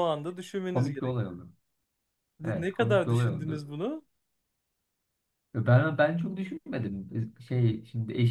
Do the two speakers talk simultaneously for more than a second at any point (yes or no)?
yes